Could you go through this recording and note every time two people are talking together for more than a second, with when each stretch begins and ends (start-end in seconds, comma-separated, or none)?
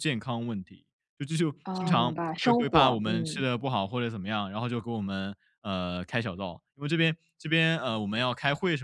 1.6-3.5